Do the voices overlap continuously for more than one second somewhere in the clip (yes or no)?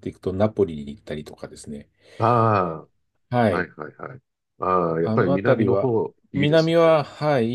yes